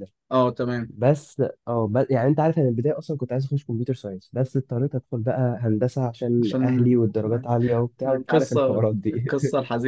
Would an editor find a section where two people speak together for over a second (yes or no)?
yes